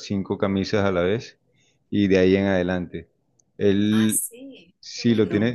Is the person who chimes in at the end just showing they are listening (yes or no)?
yes